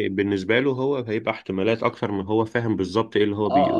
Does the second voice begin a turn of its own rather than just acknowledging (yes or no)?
yes